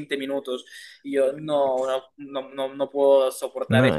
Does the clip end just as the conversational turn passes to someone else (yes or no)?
yes